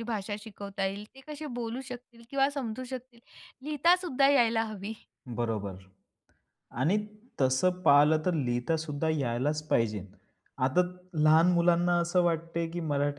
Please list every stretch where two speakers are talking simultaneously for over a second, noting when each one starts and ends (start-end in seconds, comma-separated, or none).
none